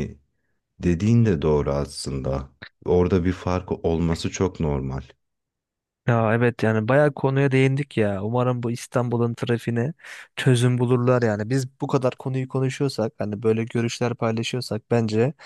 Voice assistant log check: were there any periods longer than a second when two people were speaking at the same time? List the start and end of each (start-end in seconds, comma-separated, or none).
none